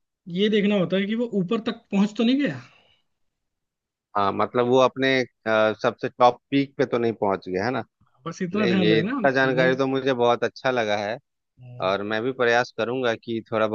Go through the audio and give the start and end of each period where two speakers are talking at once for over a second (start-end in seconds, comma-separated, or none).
8.5-9.7